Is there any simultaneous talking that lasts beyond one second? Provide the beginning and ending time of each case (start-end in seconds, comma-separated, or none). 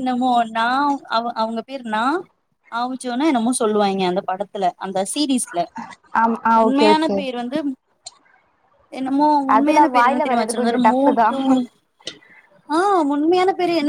9.6-11.3